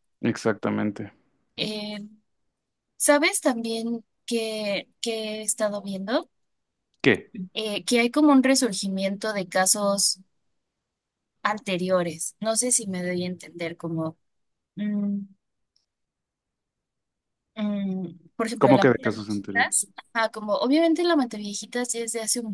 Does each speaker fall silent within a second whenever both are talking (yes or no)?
no